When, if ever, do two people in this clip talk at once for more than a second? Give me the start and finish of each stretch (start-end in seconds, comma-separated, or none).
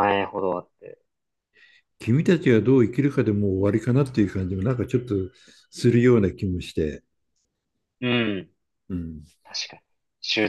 none